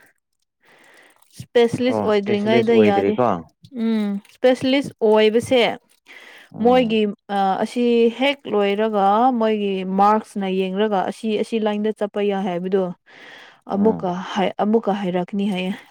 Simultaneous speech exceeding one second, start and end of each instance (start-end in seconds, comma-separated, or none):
1.9-3.1